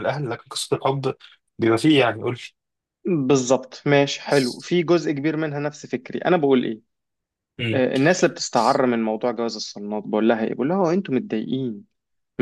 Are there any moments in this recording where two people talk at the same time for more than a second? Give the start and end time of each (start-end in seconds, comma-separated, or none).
none